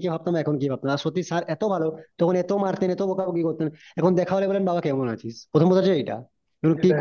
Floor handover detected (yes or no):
no